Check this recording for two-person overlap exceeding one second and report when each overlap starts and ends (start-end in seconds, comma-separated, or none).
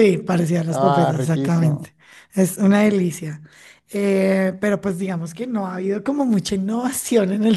0.7-1.9